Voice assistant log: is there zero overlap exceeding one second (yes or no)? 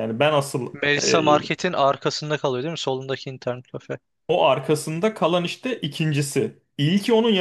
yes